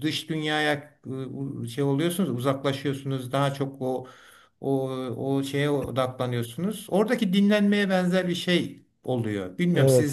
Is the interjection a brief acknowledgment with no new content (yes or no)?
no